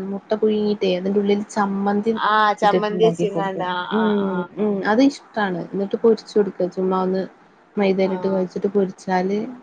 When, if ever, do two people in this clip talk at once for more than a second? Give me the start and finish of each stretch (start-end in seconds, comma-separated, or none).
2.6-4.5